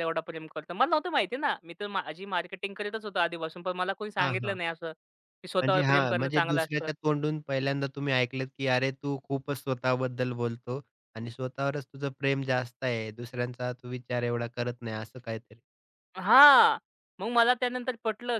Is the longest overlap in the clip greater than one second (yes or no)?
yes